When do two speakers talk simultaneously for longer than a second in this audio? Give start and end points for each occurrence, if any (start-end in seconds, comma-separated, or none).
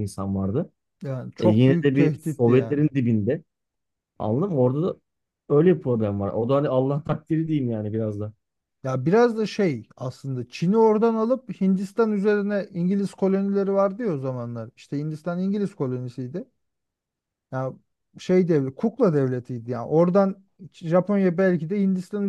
1.4-2.8